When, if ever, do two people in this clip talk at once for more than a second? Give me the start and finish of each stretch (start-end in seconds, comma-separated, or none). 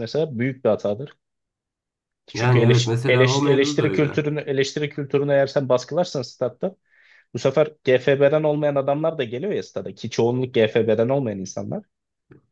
2.3-4.2